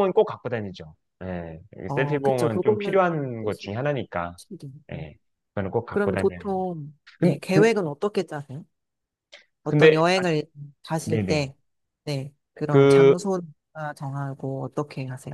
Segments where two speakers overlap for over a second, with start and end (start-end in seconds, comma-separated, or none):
1.9-3.7